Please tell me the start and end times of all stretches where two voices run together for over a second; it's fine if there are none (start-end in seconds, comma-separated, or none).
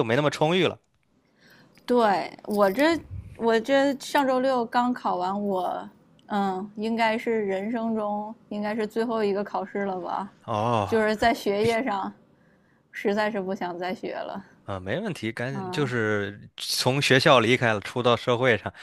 none